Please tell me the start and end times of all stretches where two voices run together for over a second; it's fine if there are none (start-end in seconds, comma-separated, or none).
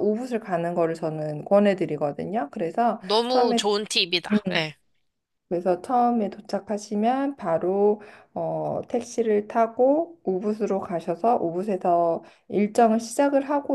none